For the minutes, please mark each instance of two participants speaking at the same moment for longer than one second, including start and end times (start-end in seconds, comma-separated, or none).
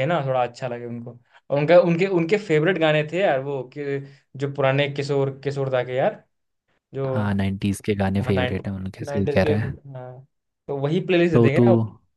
8.2-9.5